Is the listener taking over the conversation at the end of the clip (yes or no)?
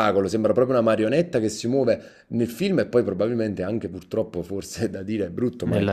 no